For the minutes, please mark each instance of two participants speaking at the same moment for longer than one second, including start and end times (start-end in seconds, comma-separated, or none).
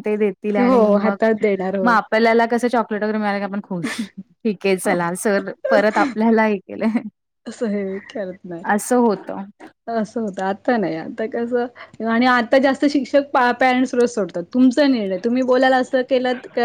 none